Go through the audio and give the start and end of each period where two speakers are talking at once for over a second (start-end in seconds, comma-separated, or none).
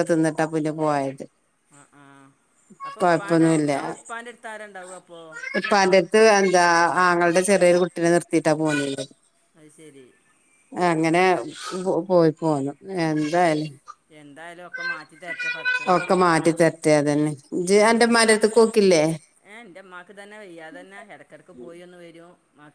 none